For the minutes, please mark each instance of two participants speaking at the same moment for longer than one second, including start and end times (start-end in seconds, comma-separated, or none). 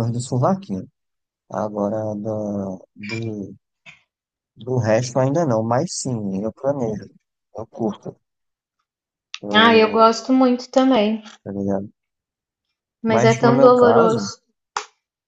13.0-14.3